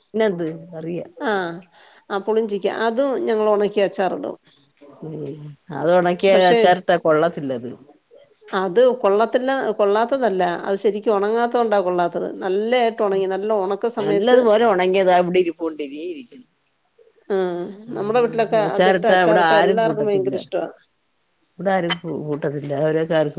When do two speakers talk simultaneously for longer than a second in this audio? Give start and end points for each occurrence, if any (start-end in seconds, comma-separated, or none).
18.7-20.3